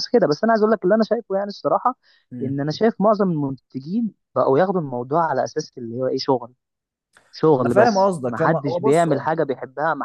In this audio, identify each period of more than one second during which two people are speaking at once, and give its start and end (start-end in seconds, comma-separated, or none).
7.6-9.2